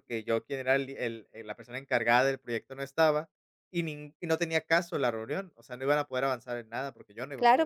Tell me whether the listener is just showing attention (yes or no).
no